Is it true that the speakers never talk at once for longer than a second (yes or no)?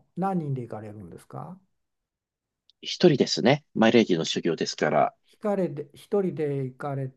yes